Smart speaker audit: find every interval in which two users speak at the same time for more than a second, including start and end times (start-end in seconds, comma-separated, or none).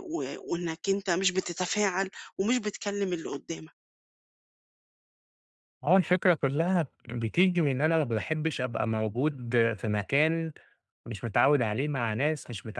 none